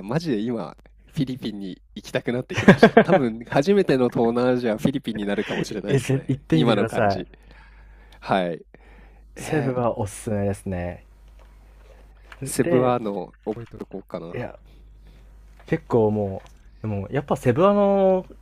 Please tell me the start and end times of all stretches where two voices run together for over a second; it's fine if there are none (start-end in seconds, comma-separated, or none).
5.9-7.2